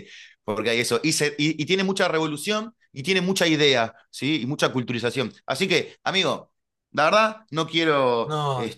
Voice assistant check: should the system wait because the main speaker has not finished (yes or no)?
yes